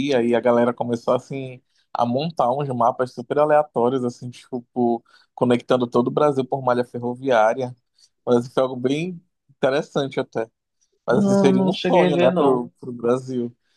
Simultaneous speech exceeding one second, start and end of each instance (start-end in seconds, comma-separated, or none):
11.1-12.6